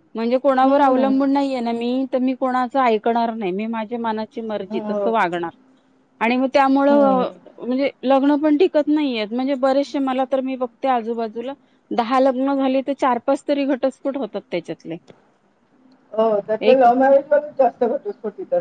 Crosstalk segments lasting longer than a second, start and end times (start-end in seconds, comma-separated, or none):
none